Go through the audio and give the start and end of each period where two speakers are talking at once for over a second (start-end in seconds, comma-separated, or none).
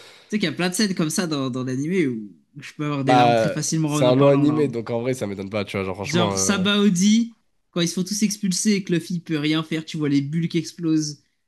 3.0-4.8